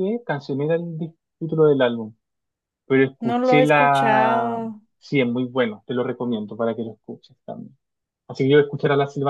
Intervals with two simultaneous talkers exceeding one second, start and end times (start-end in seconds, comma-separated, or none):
3.2-4.6